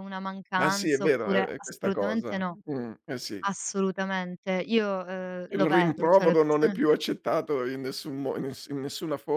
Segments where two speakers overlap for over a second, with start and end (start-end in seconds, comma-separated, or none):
0.6-2.6, 5.5-6.8